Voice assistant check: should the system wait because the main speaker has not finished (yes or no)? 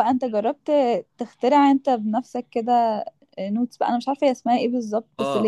no